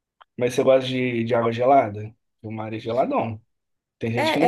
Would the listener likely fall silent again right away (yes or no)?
no